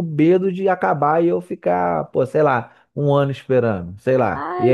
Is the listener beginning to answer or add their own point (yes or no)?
yes